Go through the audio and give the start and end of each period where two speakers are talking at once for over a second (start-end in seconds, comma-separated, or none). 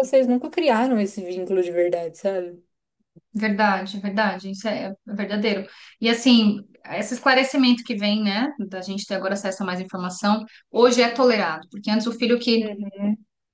none